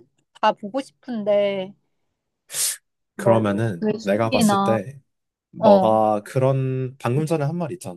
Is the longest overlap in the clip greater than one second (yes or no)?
yes